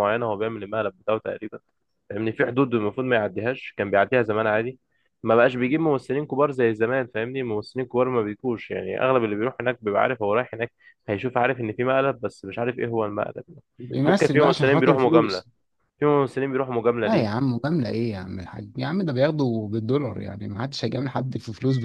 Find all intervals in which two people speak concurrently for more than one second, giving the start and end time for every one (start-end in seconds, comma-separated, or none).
14.1-15.4